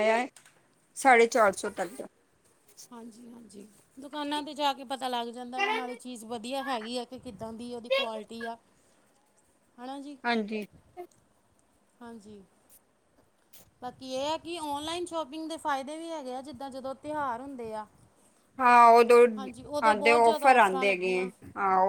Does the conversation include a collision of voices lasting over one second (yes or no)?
yes